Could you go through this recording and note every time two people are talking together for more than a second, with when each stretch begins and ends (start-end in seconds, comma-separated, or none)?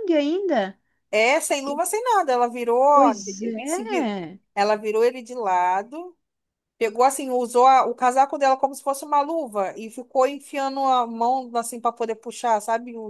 none